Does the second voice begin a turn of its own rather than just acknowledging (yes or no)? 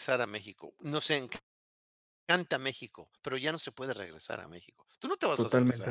yes